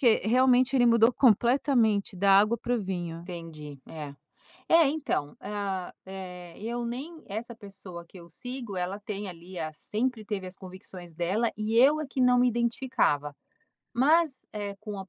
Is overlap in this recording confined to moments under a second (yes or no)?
yes